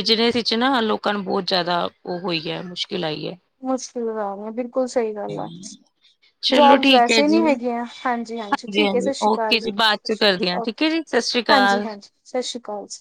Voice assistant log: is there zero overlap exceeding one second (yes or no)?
no